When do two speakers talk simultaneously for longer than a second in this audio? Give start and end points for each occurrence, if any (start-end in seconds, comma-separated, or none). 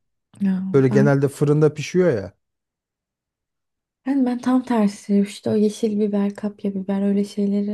none